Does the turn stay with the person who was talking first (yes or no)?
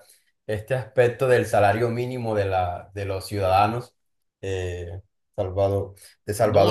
no